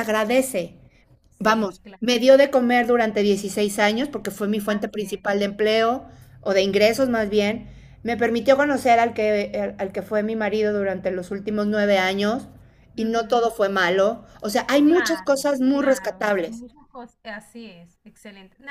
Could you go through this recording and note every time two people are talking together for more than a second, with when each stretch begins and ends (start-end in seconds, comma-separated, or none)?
14.8-16.6